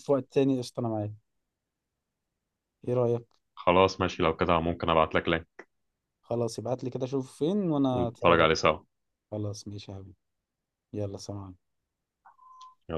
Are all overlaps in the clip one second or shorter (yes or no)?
yes